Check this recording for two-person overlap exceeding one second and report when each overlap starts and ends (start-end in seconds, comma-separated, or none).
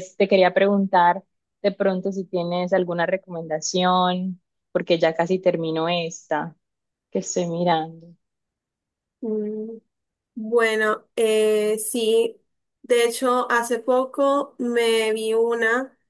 none